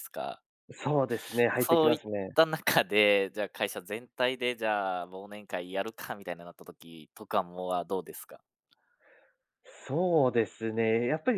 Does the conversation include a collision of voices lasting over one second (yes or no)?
no